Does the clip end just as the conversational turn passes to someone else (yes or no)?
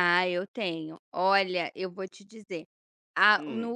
no